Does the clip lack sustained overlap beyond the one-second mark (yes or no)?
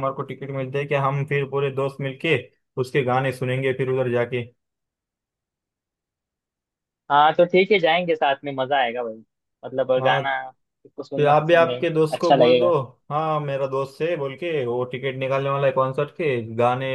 no